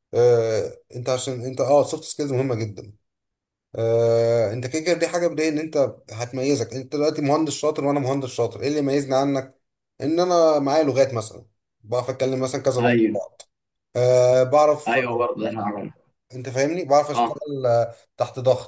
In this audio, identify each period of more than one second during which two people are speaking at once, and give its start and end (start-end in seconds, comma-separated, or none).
none